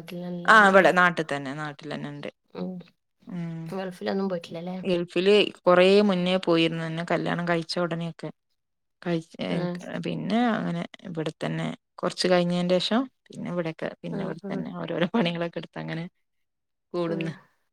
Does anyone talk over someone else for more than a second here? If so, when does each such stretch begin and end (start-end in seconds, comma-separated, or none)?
none